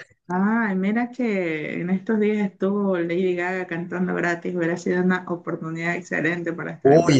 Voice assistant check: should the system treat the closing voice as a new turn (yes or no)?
yes